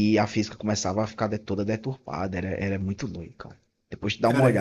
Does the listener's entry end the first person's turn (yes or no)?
yes